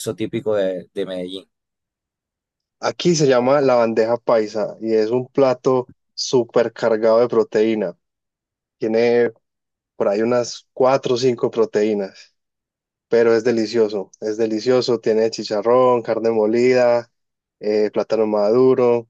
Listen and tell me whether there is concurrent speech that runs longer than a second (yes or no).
no